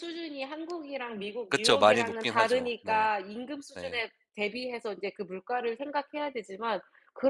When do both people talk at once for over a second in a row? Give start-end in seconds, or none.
1.5-3.1